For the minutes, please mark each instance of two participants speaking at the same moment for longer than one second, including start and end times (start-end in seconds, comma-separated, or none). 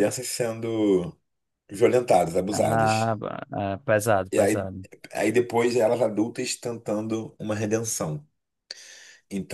none